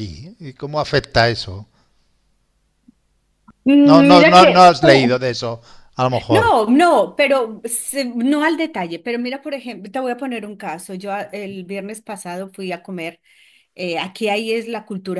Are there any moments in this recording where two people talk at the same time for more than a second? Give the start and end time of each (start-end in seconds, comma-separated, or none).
3.8-5.1